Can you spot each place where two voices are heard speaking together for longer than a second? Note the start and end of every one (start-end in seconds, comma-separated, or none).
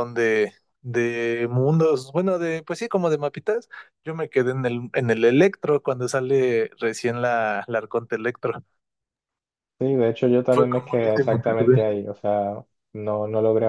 10.5-11.8